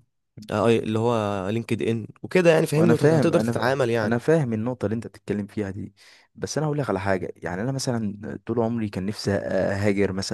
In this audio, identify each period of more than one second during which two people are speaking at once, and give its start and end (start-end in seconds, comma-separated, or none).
2.7-4.1